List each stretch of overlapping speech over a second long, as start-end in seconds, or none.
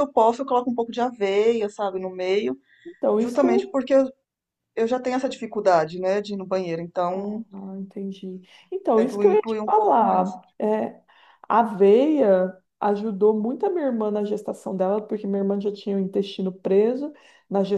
8.9-10.4